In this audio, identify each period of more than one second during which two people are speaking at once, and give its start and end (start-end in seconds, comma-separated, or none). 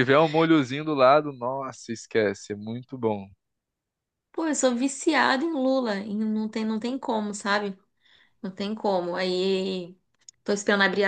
none